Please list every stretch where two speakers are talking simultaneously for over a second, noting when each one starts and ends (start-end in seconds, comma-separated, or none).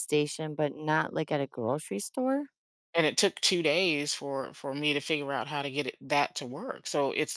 none